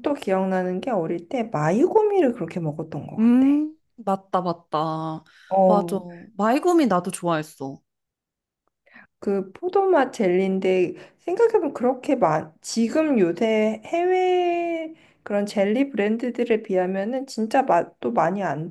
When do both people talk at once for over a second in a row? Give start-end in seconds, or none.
none